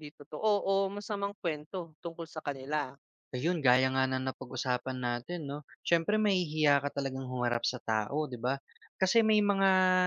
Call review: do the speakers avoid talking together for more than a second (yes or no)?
yes